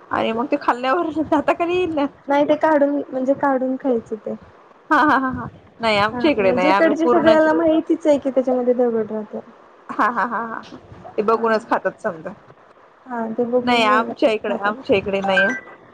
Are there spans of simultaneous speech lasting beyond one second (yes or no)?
yes